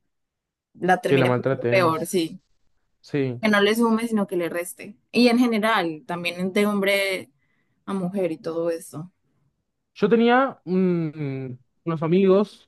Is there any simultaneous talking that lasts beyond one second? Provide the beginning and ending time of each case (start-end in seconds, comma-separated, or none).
1.1-2.4